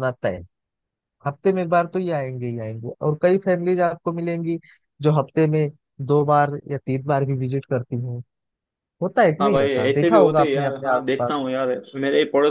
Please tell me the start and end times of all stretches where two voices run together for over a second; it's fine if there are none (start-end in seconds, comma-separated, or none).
9.4-11.4